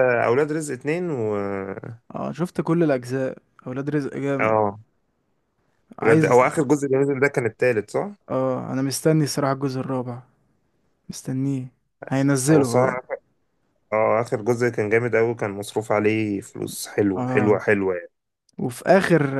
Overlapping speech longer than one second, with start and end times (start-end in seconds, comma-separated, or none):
none